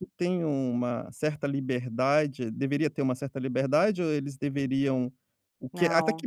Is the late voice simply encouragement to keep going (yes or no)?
yes